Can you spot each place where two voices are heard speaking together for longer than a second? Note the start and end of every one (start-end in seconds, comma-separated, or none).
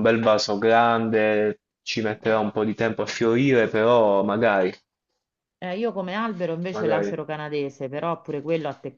none